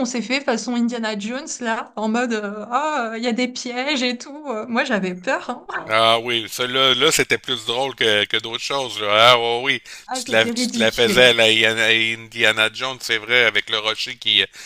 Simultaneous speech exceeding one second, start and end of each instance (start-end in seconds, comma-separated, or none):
10.1-11.4